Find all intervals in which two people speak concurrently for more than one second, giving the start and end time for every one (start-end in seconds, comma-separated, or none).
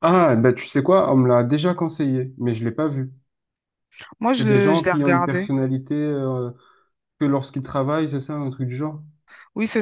4.3-5.5